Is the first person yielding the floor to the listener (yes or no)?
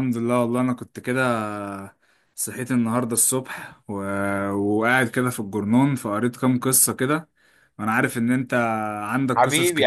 yes